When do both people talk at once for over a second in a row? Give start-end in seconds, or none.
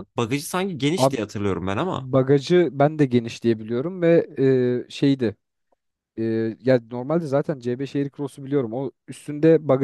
none